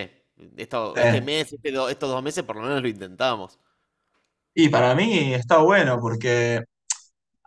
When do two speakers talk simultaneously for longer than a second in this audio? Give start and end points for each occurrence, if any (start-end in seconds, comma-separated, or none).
none